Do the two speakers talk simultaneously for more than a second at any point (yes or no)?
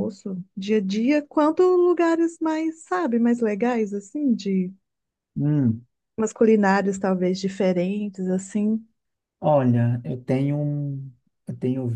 no